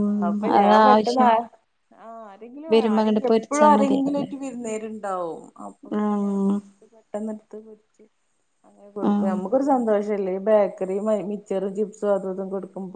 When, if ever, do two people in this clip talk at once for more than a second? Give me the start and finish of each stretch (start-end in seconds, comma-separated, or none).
2.7-4.3